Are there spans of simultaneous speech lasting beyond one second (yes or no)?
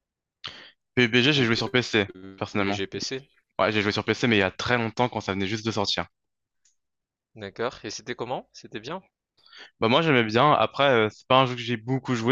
yes